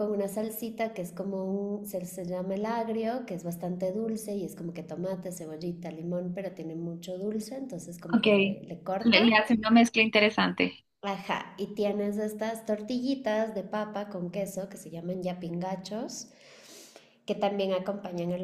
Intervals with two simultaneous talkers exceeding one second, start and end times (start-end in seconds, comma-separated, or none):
none